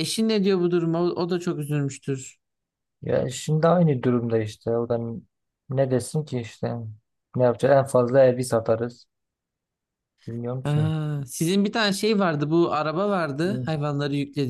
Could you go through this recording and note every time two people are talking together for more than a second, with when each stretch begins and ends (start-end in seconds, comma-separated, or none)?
none